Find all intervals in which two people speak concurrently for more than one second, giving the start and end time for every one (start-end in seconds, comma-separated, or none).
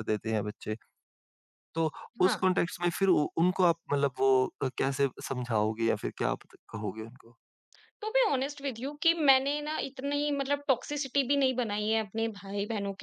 none